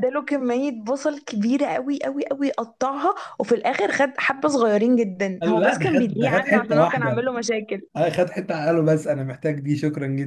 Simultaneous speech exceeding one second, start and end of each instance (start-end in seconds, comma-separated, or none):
5.4-7.2